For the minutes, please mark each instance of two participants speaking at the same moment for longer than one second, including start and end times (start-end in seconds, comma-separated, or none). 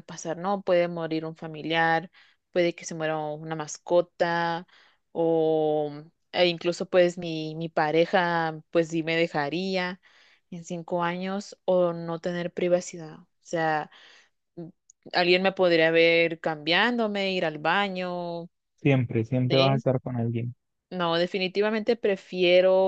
none